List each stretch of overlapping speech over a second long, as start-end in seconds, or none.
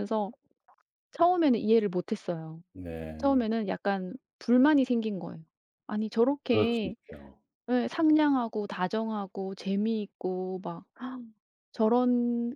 none